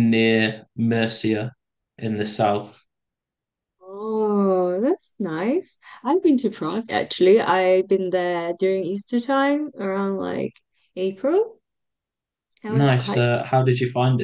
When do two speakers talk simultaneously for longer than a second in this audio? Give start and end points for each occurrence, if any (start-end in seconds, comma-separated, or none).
none